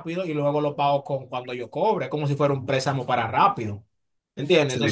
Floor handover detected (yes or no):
no